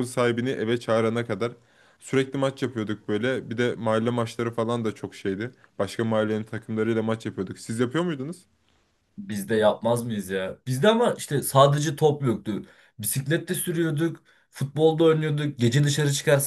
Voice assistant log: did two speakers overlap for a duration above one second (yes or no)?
no